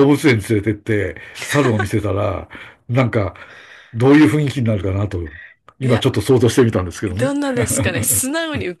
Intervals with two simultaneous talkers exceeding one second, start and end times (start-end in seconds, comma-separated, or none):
none